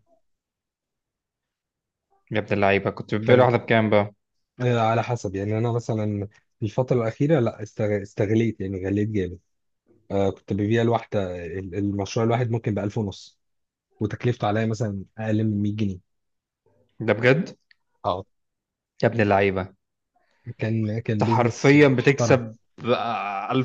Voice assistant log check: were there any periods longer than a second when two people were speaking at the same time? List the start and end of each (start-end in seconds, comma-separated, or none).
21.1-22.4